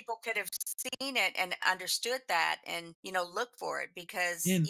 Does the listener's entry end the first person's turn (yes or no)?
no